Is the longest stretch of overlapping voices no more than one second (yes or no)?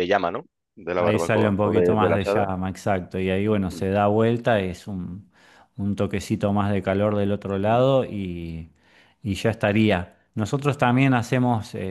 no